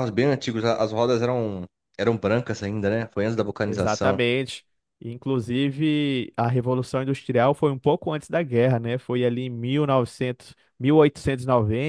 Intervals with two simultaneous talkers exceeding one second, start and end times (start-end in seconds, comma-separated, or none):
none